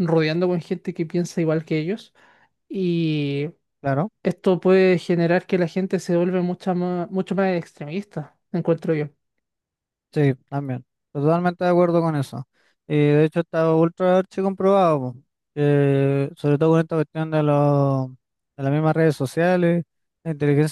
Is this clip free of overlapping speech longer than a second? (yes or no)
yes